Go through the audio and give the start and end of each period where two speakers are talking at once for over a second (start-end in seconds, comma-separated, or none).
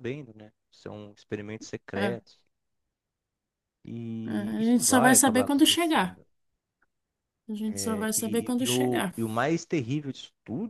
4.3-6.2, 7.7-9.1